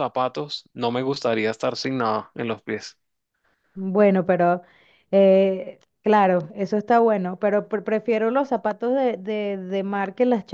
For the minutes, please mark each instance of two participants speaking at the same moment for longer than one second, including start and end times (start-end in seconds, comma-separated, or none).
none